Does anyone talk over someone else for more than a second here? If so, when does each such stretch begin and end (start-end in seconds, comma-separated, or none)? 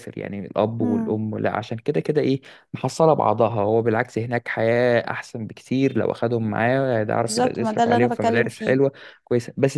7.2-8.8